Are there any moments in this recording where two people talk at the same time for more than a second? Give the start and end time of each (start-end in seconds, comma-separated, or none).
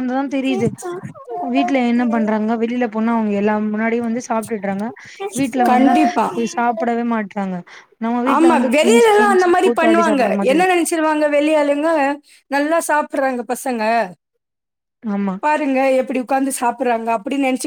8.3-10.8